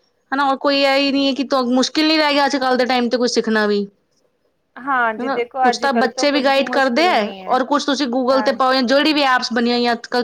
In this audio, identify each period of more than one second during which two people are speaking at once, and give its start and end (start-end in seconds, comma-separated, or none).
5.2-7.6